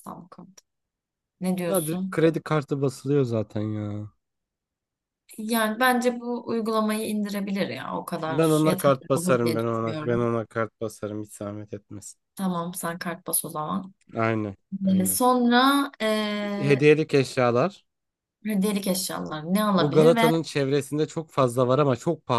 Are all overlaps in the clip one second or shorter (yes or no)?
no